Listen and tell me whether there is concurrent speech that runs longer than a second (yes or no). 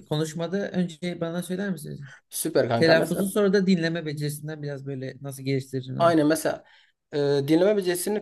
no